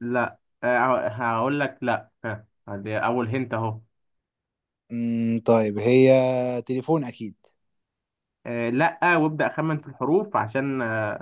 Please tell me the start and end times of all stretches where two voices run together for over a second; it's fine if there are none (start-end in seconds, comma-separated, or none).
none